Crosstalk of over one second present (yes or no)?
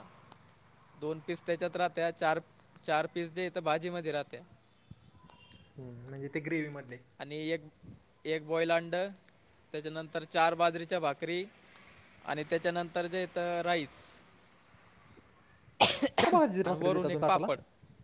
yes